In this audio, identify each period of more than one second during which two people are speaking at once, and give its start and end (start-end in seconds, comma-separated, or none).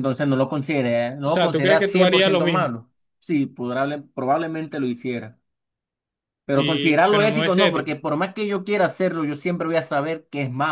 1.2-2.7, 6.5-7.9